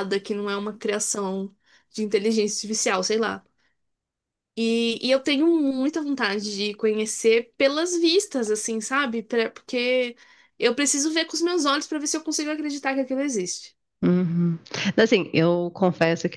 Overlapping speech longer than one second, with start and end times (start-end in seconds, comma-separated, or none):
none